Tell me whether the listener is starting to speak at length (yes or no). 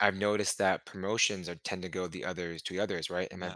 no